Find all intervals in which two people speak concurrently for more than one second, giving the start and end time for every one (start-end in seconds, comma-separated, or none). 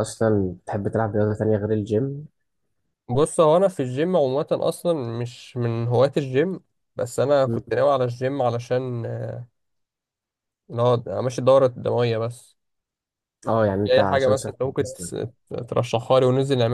13.8-15.1